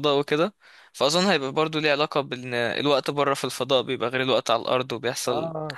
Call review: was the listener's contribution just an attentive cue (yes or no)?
no